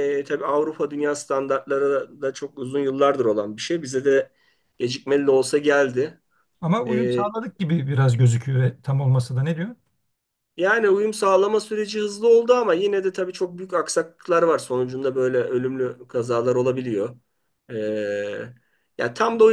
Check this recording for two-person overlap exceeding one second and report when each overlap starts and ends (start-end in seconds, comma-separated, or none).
none